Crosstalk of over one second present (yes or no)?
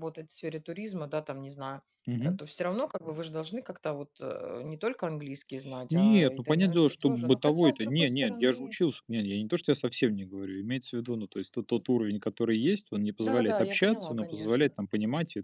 yes